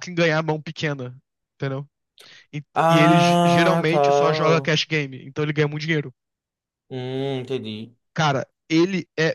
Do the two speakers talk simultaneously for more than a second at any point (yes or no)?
yes